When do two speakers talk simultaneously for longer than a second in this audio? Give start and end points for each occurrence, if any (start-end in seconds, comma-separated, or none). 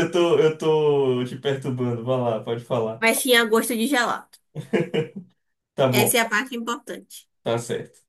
none